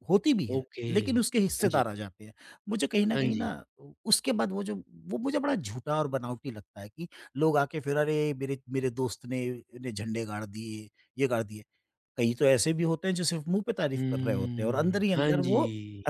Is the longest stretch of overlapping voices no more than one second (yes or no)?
no